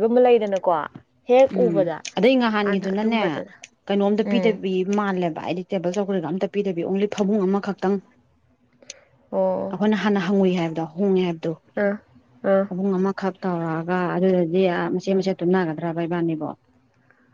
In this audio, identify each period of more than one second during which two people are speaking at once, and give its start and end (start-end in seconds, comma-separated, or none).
none